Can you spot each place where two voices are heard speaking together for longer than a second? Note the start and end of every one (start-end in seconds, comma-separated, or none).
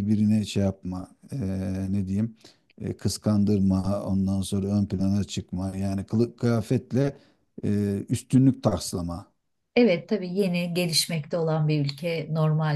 none